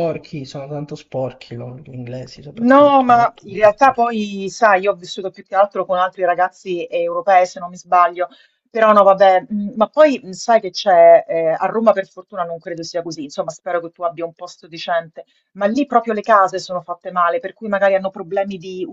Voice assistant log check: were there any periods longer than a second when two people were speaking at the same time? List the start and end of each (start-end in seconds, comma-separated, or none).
2.6-4.1